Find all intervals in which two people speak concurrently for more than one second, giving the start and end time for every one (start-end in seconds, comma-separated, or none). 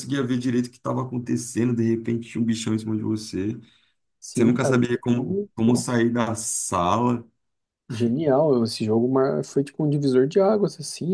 4.3-6.0